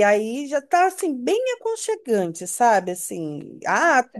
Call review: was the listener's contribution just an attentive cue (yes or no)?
yes